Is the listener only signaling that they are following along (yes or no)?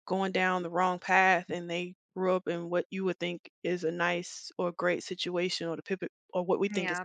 no